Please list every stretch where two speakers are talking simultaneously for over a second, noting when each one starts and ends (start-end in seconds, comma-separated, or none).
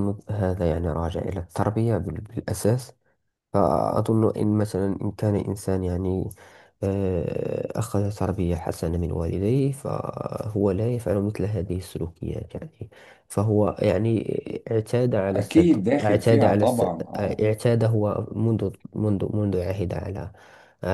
15.3-17.5